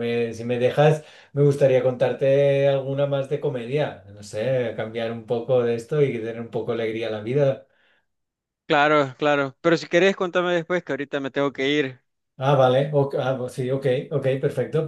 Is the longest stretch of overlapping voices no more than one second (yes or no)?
yes